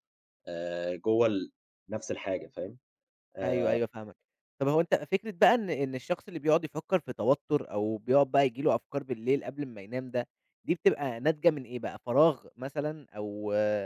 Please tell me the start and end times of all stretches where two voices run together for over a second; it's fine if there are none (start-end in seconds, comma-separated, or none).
none